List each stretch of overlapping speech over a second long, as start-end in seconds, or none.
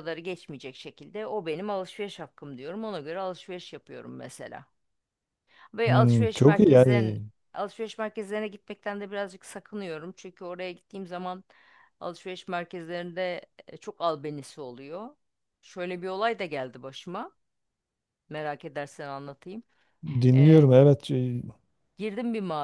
5.8-7.2